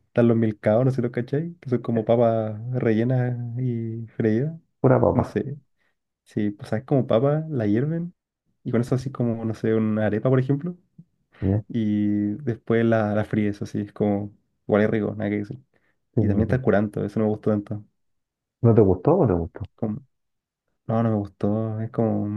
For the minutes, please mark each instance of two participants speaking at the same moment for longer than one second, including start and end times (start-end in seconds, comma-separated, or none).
none